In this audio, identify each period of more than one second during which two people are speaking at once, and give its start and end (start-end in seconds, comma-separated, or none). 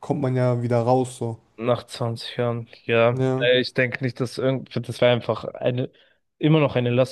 none